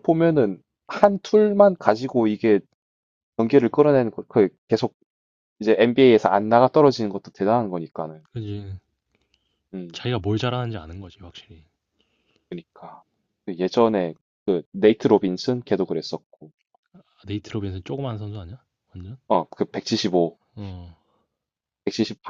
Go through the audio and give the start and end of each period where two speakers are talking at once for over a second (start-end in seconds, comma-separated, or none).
none